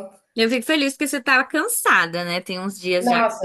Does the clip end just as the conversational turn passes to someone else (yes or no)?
yes